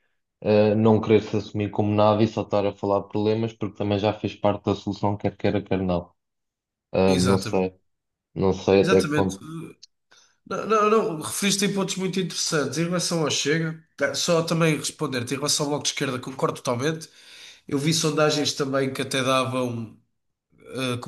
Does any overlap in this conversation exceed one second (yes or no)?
no